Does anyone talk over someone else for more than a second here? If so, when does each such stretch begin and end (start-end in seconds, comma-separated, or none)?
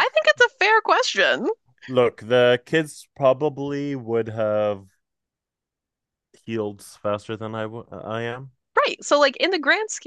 none